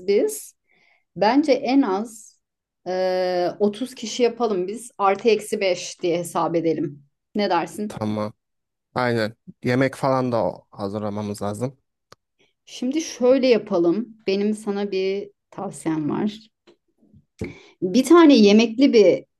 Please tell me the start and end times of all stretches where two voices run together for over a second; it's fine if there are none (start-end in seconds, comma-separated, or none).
none